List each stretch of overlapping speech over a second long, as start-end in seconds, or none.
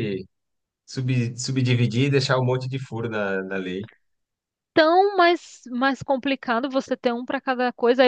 none